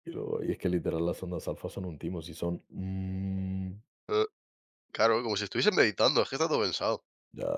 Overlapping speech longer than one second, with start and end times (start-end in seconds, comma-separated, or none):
none